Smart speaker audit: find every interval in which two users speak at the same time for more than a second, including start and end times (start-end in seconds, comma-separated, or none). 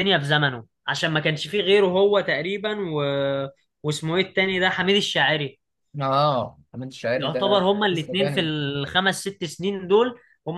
7.2-8.5